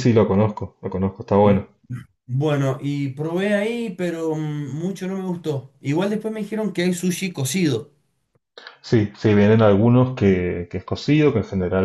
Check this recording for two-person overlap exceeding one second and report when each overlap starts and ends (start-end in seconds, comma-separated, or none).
none